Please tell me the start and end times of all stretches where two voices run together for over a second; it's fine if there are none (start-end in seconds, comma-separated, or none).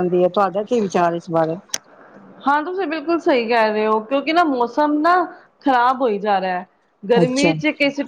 none